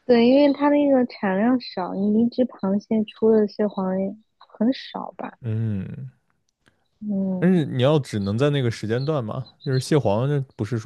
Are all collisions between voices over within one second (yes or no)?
yes